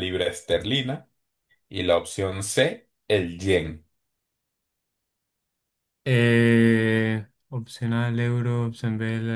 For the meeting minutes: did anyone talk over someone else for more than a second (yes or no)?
no